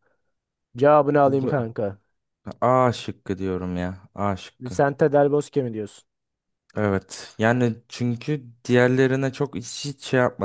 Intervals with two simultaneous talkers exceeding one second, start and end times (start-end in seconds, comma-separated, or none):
none